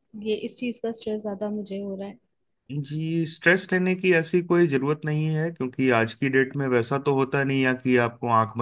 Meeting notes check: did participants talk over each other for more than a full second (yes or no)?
no